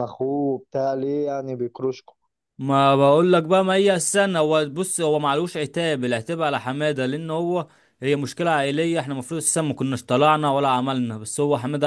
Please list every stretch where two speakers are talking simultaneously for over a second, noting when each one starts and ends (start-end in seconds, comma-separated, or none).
none